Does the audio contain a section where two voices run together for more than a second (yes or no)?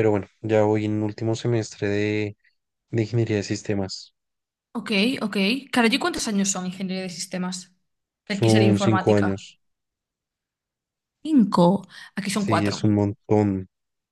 yes